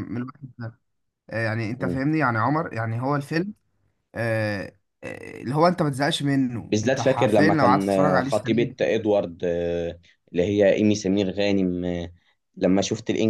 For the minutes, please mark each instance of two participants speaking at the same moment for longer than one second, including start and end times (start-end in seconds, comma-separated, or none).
6.7-8.8